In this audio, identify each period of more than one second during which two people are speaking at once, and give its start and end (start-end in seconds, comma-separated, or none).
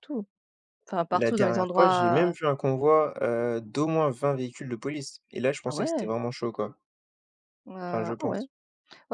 1.1-2.3